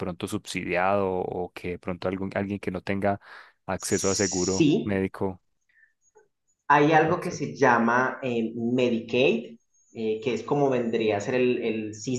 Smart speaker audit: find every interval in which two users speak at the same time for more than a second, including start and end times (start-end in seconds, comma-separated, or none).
3.8-5.1